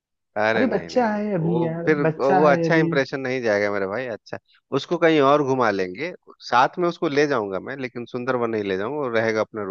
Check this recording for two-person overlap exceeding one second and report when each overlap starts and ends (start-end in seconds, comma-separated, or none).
0.6-2.9